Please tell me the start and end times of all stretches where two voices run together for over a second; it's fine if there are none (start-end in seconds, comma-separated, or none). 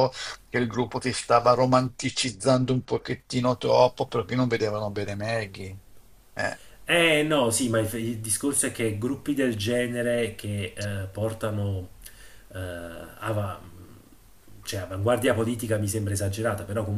none